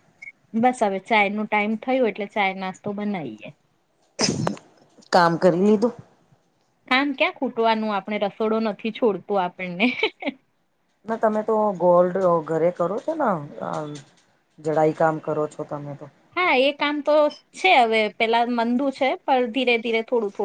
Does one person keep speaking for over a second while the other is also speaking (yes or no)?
no